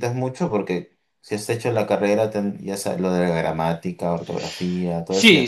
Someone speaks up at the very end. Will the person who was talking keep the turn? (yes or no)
no